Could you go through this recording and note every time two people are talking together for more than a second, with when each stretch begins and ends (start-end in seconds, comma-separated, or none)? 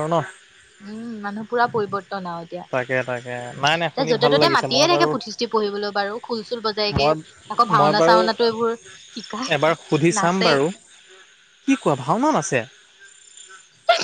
2.7-5.1